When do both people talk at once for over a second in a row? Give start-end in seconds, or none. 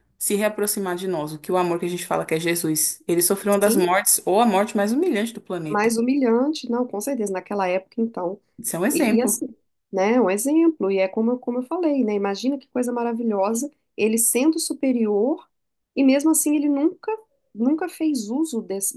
none